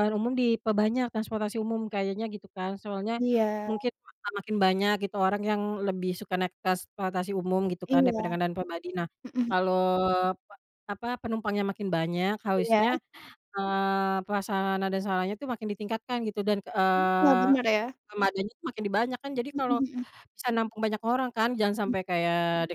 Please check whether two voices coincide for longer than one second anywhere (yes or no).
no